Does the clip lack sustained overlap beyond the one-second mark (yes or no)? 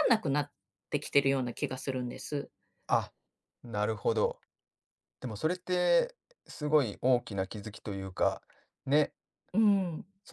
yes